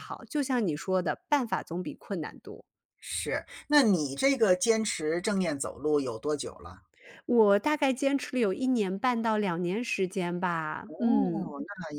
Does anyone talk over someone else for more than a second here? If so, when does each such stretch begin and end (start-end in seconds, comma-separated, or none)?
none